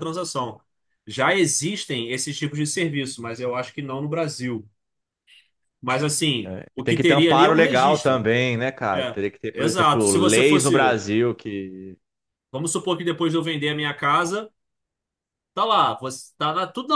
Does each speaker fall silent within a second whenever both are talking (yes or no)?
no